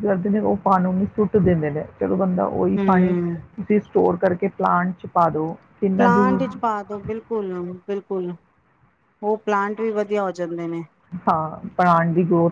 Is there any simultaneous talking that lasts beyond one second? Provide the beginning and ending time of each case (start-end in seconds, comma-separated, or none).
none